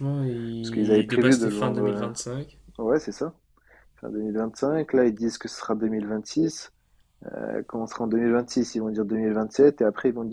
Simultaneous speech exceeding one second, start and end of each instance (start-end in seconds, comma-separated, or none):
0.6-2.1